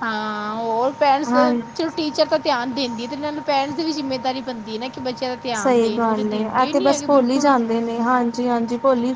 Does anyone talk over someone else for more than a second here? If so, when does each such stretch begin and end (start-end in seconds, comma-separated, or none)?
5.6-7.5